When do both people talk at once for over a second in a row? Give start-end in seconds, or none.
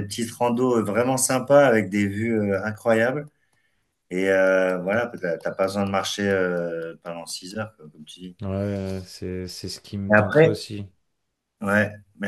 none